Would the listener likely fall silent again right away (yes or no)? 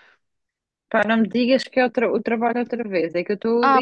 no